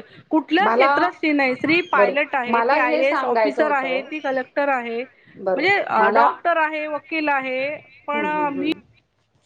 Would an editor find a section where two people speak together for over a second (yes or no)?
yes